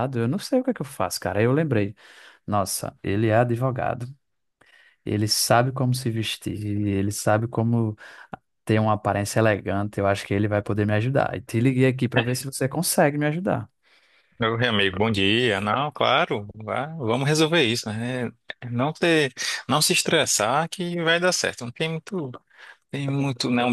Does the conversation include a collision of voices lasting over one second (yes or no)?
no